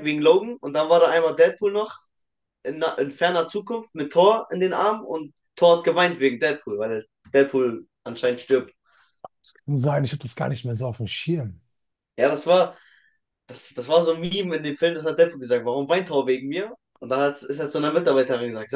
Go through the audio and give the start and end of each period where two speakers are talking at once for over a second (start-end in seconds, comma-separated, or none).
none